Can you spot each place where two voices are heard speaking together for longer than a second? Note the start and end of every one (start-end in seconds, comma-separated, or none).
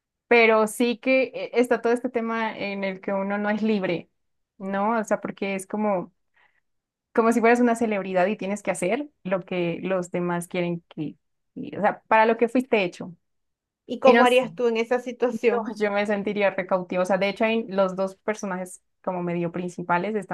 none